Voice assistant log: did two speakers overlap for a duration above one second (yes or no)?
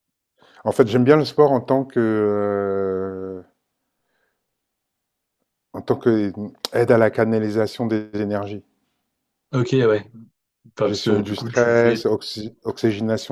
yes